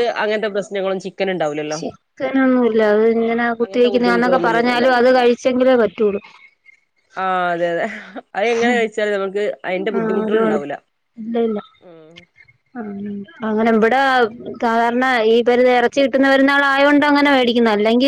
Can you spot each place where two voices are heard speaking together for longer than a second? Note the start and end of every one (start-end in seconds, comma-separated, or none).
3.6-4.8